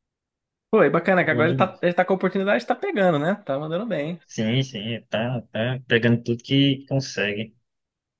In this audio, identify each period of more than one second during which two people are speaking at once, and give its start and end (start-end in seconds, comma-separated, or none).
none